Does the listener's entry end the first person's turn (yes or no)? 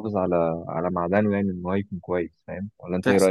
yes